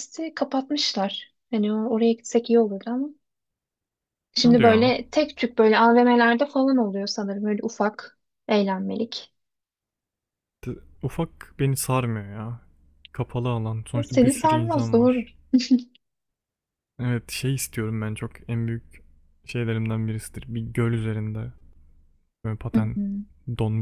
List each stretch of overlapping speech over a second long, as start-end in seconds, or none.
13.9-15.2